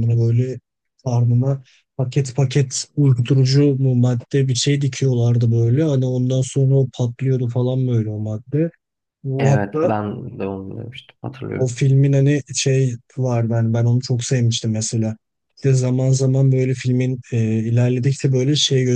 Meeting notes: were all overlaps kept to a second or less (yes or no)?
yes